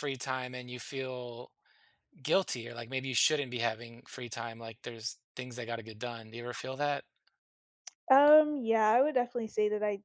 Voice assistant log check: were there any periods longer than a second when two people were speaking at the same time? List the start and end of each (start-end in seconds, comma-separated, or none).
none